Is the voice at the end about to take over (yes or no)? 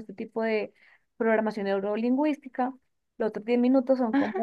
no